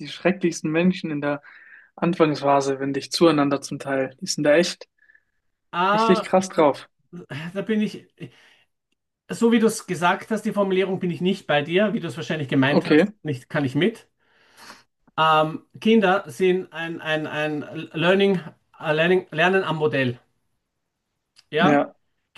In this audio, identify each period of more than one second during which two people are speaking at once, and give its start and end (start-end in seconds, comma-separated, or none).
none